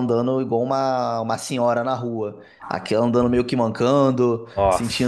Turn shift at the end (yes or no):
no